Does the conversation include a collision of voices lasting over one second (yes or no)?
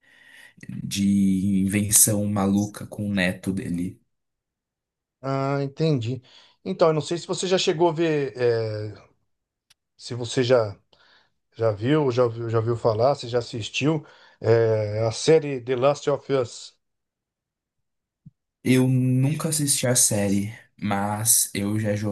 no